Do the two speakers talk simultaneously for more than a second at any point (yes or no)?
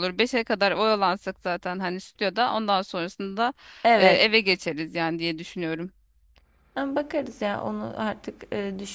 no